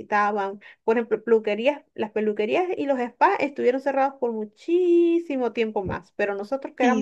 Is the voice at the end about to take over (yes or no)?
no